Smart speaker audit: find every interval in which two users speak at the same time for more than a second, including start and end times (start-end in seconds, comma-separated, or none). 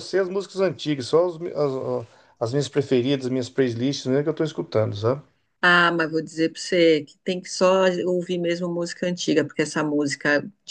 none